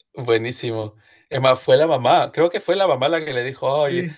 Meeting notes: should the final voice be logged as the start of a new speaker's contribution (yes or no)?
no